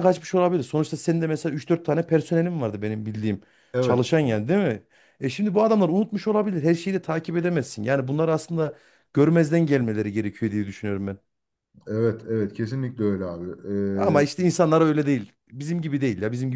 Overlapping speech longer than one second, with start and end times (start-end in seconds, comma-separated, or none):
none